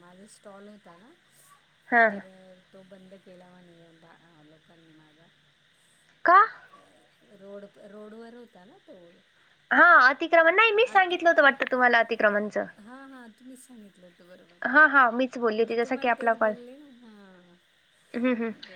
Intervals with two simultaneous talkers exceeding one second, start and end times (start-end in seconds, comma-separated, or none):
14.6-16.6